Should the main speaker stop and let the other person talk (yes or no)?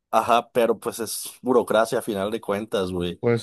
no